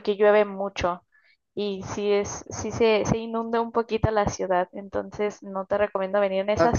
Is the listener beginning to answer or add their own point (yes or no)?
yes